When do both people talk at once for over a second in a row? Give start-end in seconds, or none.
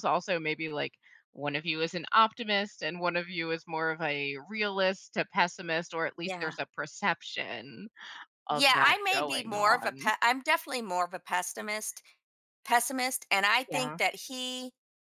8.5-10.1